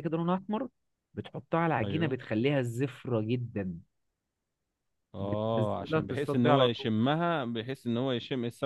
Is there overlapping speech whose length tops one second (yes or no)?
yes